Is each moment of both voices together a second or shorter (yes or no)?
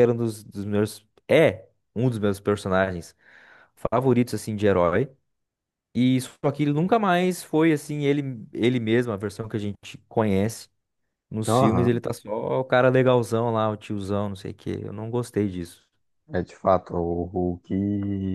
yes